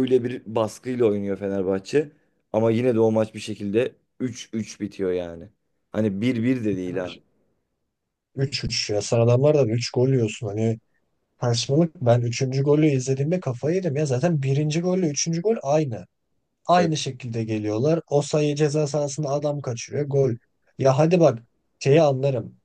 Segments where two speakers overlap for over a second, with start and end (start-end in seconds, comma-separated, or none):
none